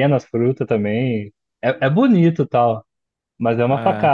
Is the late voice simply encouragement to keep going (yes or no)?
yes